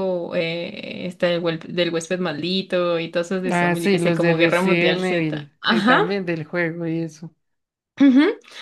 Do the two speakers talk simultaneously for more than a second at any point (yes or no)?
yes